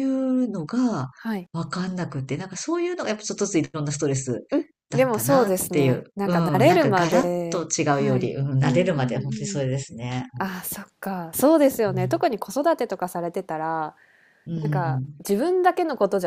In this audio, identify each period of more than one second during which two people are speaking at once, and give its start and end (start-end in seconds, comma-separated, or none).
4.9-9.6